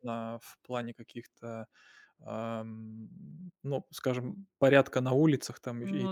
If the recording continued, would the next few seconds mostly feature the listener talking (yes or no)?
no